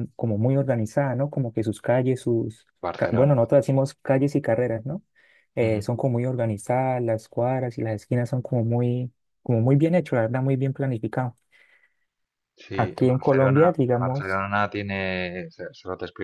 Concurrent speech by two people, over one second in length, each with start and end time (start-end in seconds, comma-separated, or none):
12.7-14.4